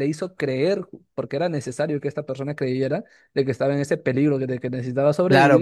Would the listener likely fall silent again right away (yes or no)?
no